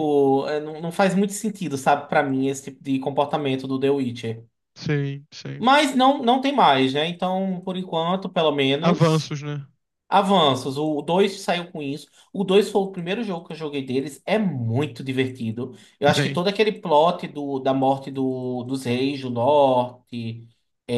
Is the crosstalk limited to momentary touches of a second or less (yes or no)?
yes